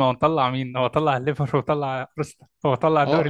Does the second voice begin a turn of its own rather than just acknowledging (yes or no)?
yes